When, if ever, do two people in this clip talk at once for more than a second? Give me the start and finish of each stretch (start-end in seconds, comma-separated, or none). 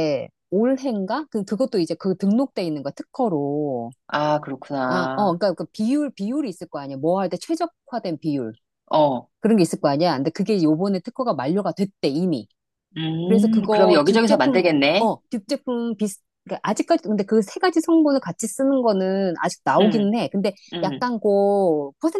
13.2-15.1